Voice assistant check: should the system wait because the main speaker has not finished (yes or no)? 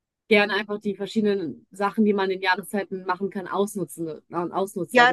no